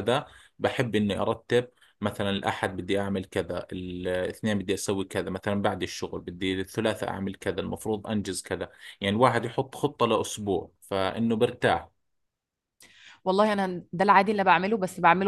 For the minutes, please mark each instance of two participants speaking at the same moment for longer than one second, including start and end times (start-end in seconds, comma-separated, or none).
none